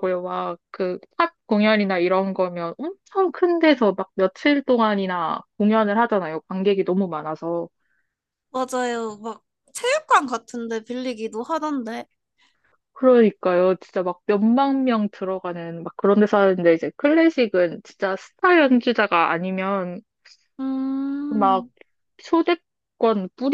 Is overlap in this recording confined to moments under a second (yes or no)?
yes